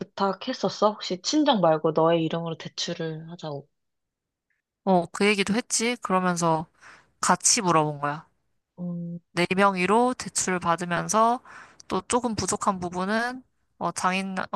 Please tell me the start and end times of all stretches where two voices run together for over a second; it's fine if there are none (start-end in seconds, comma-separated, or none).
none